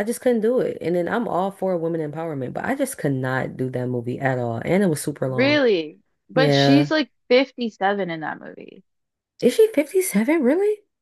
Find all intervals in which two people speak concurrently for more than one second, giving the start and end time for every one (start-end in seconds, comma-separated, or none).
none